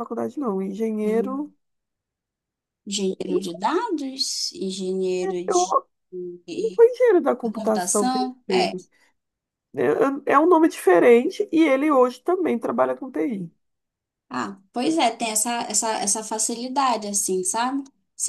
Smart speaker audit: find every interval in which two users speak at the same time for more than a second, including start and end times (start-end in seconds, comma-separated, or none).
7.4-8.7